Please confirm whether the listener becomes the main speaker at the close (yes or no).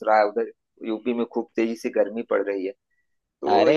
yes